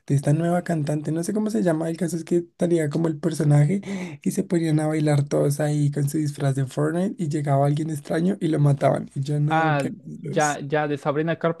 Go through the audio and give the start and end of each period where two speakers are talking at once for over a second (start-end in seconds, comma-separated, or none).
none